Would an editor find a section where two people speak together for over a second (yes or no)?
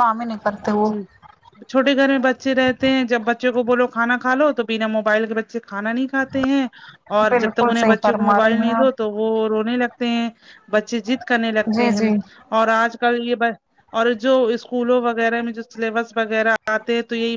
yes